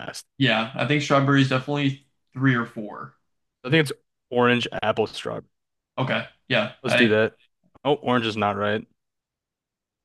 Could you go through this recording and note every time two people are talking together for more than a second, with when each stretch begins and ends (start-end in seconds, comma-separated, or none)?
none